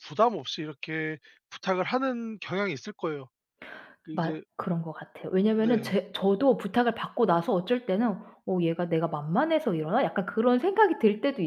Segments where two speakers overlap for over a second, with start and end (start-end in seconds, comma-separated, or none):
none